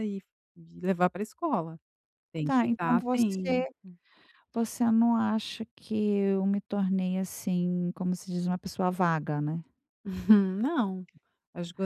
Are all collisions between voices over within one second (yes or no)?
no